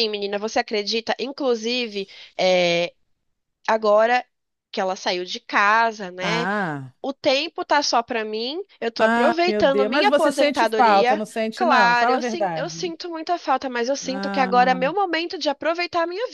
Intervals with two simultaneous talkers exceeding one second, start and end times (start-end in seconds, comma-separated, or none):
9.0-12.9